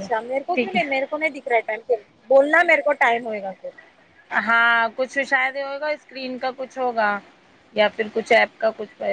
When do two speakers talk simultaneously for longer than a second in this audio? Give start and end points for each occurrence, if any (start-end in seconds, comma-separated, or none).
none